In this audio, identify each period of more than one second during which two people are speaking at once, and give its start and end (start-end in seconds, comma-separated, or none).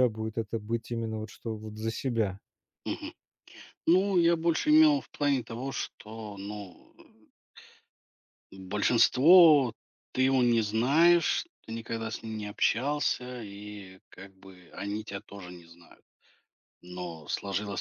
none